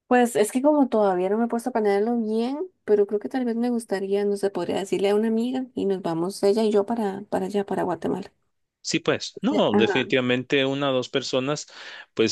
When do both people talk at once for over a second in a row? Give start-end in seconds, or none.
none